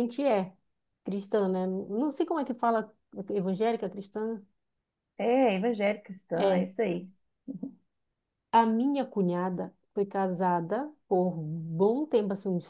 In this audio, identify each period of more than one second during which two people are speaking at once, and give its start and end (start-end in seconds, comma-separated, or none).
none